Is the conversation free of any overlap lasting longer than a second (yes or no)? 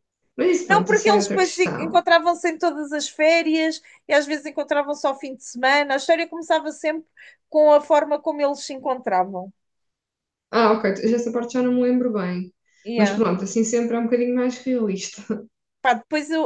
no